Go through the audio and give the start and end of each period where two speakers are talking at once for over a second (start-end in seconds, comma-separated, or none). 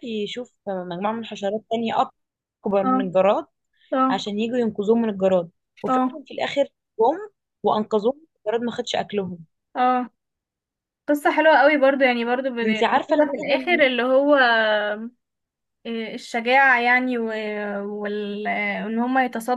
12.6-13.8